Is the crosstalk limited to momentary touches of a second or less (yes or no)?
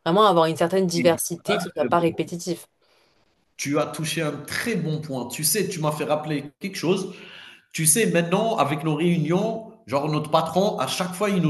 no